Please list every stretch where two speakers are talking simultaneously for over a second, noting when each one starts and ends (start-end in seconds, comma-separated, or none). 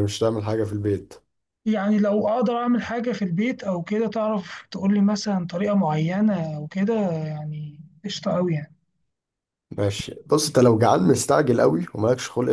none